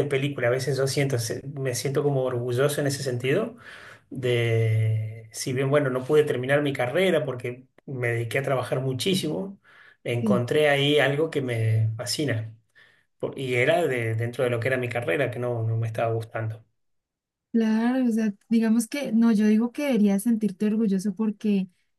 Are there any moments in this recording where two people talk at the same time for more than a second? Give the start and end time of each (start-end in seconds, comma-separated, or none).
none